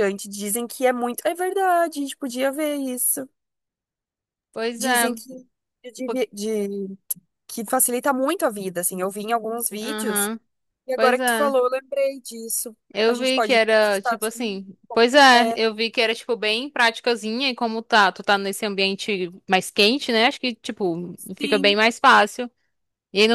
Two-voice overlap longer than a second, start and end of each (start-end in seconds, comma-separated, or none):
12.9-14.6